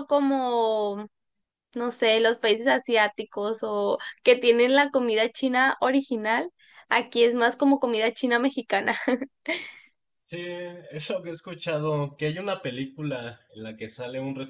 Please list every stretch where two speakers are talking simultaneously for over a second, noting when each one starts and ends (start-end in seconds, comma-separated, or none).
none